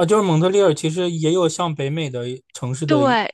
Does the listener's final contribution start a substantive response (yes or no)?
yes